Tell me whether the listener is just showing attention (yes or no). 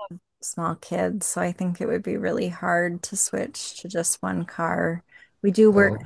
yes